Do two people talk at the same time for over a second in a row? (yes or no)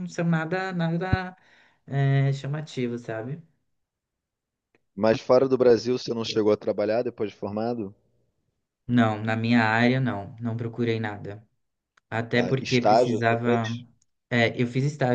yes